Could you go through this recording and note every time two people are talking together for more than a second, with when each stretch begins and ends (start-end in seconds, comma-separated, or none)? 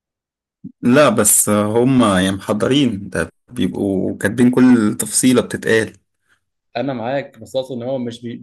none